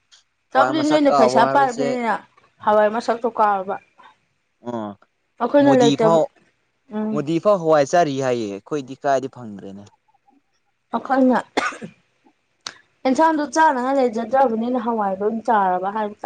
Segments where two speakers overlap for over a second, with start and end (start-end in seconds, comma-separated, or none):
0.5-2.0